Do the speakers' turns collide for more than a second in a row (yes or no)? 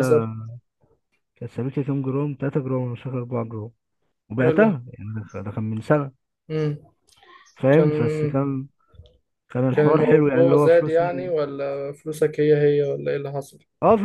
yes